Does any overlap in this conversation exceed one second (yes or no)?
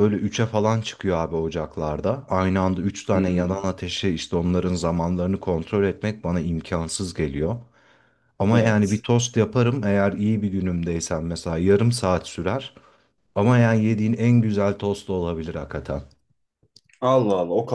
no